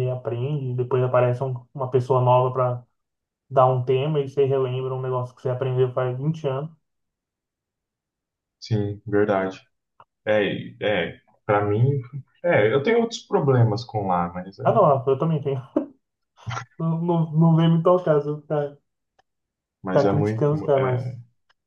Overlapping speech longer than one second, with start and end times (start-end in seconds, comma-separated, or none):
19.9-21.1